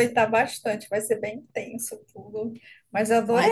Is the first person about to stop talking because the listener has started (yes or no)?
no